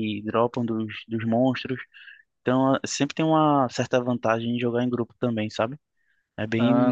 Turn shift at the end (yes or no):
yes